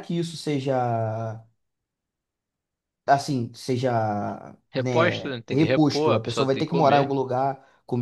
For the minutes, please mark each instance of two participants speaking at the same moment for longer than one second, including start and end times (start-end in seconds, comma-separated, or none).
4.8-7.1